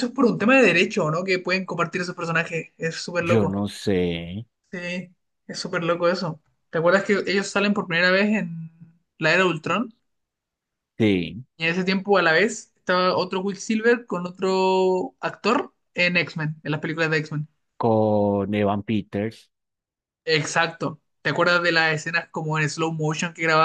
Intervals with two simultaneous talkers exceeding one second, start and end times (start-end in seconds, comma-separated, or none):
none